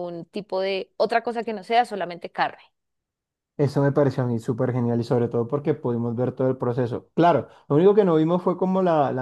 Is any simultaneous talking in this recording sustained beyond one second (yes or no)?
no